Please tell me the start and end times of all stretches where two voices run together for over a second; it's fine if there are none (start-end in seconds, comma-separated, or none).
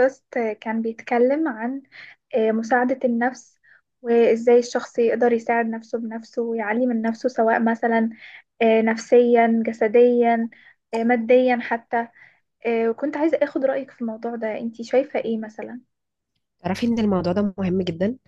none